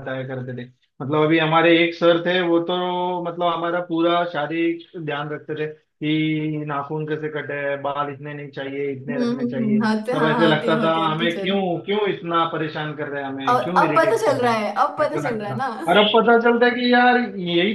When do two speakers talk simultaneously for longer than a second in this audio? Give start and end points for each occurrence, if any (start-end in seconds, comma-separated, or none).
9.1-11.5, 13.5-15.7